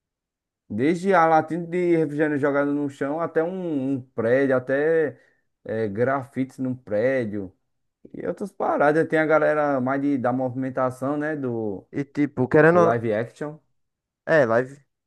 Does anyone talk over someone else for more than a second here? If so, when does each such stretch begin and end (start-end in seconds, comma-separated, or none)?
none